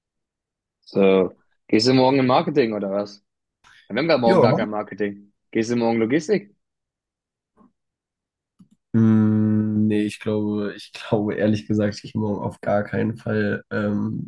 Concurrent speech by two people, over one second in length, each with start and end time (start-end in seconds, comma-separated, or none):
none